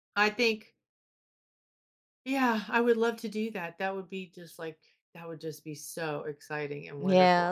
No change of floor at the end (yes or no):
no